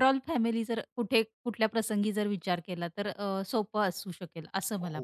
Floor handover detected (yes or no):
yes